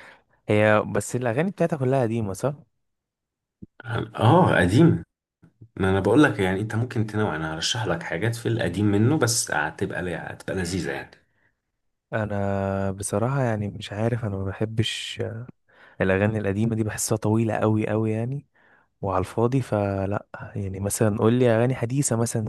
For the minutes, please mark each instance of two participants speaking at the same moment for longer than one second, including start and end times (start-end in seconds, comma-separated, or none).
none